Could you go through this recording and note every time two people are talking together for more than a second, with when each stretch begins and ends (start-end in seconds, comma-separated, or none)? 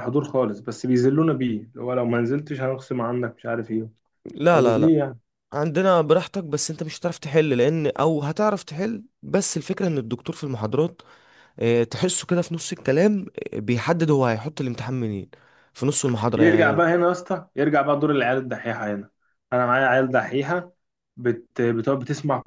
none